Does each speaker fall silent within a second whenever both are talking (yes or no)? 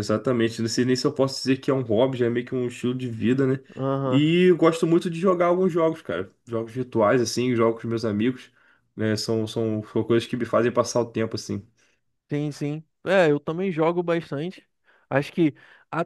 yes